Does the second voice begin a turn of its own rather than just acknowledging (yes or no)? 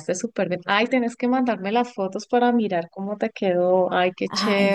yes